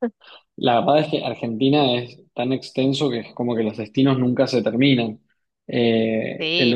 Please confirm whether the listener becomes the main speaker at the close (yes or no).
yes